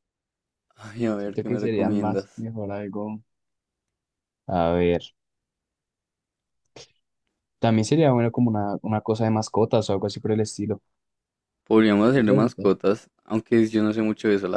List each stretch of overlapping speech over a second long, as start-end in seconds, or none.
1.2-2.5